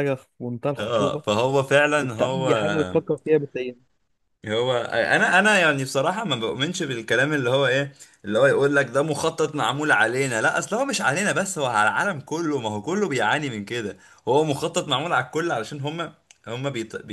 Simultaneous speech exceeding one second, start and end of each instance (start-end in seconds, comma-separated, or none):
none